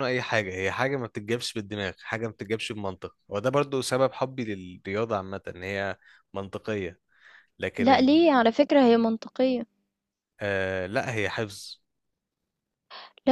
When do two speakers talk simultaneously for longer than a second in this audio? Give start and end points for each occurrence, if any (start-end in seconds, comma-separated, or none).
none